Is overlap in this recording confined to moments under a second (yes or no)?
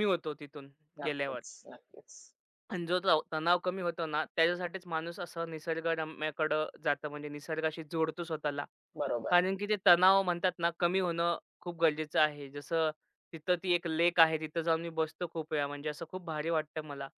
yes